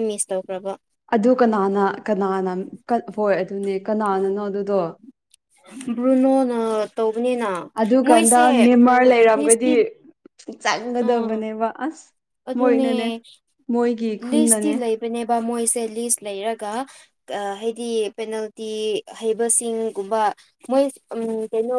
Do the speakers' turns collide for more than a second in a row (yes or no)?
yes